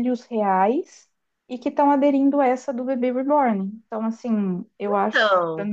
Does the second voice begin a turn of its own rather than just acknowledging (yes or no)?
no